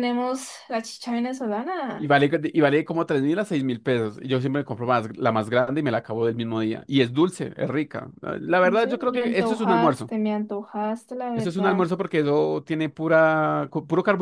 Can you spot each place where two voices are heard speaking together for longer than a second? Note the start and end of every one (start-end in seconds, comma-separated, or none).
8.6-10.1